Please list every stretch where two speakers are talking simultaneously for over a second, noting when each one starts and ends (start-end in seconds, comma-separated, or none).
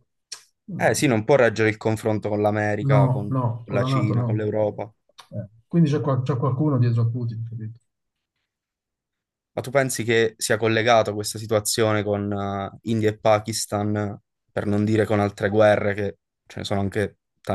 2.8-4.5